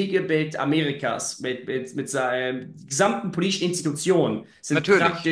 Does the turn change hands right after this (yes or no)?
no